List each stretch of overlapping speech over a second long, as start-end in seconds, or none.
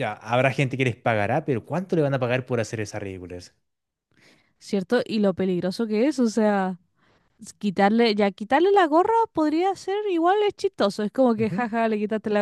none